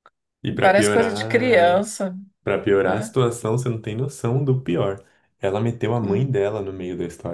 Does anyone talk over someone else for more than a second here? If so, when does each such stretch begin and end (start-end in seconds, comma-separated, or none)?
0.6-1.9